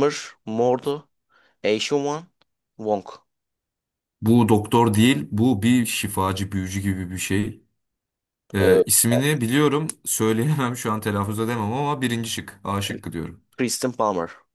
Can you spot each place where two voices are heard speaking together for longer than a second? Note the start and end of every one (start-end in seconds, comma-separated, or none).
none